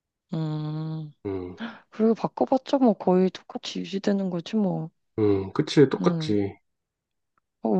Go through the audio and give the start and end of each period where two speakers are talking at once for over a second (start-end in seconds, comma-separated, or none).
none